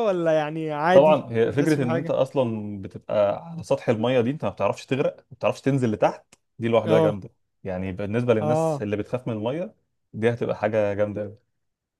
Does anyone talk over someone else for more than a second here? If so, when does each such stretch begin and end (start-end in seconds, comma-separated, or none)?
0.9-2.1